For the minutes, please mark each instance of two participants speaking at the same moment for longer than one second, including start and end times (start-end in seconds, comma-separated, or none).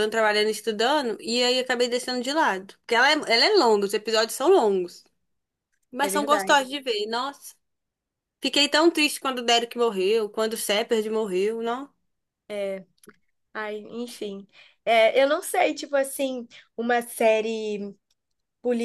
none